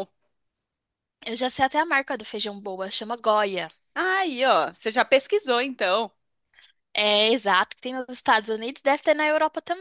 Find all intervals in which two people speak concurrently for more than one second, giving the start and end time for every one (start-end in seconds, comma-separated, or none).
none